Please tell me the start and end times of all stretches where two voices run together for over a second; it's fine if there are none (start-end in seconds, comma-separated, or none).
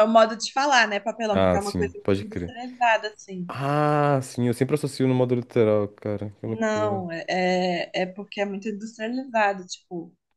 1.3-2.5